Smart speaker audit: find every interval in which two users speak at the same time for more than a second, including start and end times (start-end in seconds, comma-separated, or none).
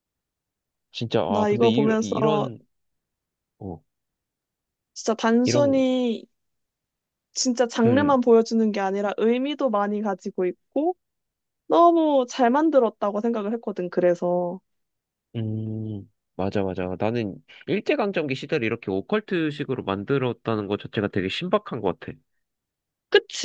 1.3-2.5